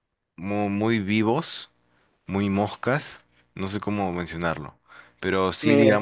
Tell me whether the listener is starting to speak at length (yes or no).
no